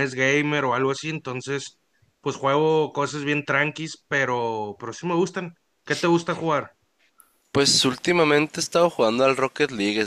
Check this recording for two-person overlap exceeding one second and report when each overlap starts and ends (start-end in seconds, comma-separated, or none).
none